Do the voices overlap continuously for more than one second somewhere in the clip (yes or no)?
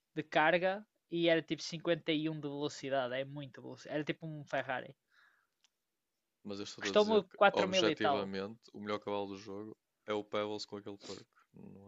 yes